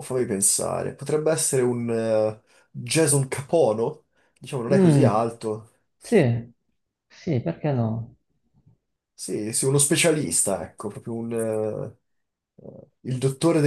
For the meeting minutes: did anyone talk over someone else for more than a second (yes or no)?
no